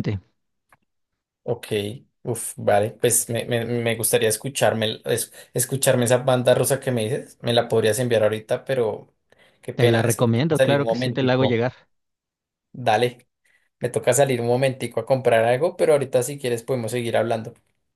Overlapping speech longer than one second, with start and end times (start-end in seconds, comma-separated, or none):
9.7-11.7